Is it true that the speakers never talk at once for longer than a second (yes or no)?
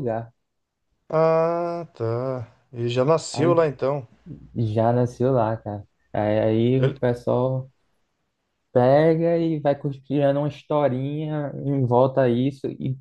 yes